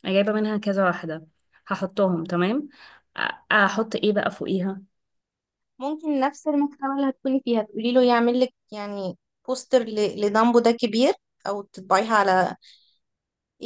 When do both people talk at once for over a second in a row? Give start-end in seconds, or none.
none